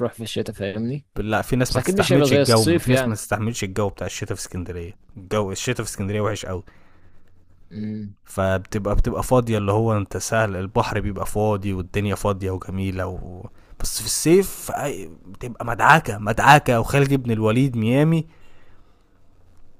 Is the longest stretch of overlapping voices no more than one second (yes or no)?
no